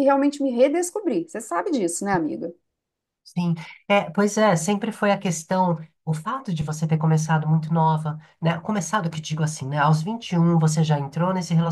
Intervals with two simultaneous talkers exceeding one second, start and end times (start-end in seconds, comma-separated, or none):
none